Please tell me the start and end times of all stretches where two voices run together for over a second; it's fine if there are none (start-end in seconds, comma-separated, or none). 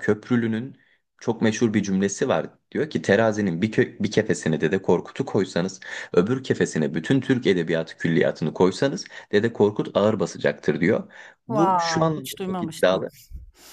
11.5-13.1